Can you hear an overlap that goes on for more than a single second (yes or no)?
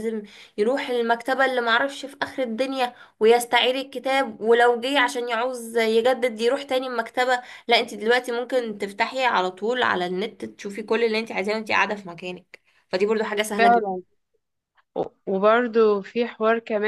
no